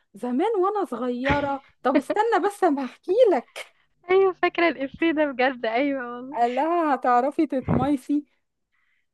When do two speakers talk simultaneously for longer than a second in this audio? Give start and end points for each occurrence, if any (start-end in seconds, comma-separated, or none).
none